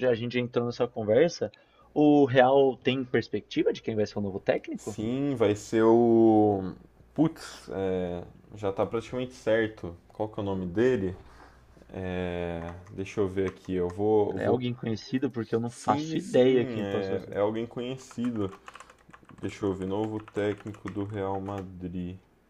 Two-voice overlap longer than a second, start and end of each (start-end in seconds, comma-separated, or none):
15.7-17.4